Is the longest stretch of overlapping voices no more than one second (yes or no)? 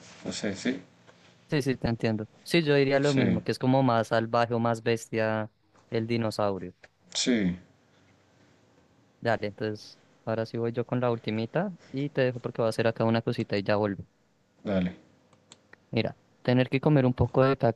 yes